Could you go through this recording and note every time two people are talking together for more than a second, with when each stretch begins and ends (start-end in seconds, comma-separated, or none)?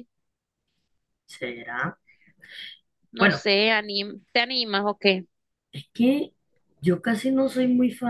none